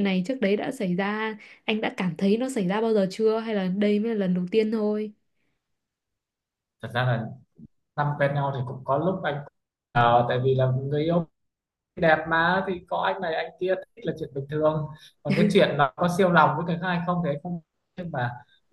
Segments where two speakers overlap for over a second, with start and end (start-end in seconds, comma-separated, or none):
none